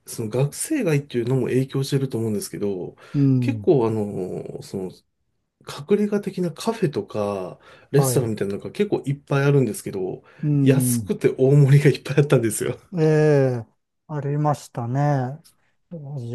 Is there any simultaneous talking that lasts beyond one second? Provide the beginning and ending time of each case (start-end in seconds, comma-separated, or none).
none